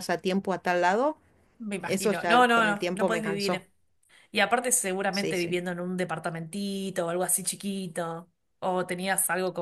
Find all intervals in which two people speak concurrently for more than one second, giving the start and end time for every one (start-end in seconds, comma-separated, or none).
1.9-3.6